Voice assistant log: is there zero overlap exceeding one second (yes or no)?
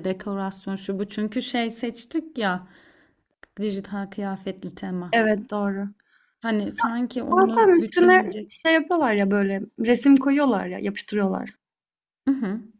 no